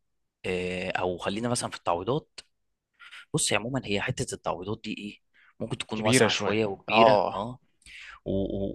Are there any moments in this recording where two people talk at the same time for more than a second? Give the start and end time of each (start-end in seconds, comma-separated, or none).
5.9-7.5